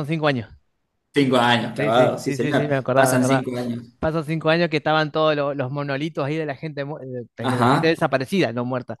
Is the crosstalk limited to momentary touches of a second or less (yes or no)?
no